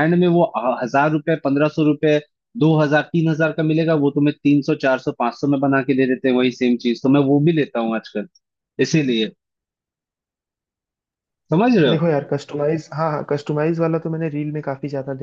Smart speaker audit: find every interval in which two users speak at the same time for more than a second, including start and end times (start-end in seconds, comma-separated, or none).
none